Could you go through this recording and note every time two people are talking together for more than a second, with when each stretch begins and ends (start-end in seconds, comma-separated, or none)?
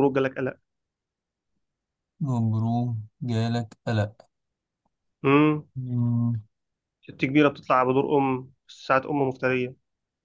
none